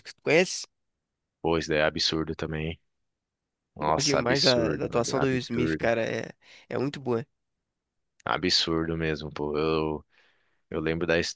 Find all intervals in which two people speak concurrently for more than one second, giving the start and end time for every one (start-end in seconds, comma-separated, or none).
3.8-5.9